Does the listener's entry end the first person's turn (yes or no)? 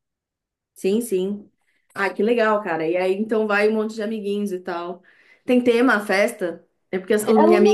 no